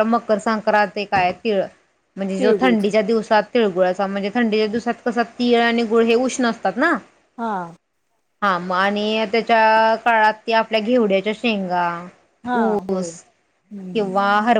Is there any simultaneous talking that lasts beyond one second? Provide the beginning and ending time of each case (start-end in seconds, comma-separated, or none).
none